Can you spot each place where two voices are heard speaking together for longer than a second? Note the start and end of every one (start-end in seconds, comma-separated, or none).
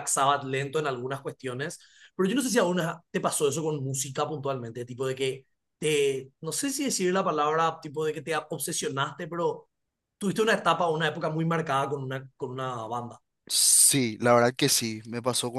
none